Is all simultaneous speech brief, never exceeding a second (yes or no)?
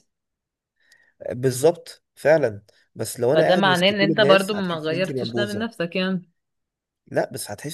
no